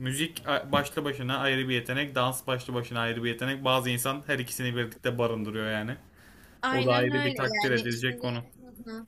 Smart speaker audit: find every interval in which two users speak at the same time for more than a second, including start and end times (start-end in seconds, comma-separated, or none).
6.7-8.3